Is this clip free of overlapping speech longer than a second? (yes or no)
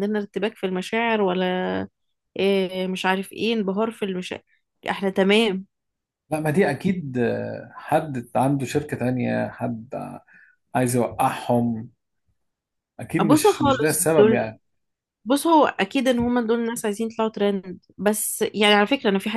no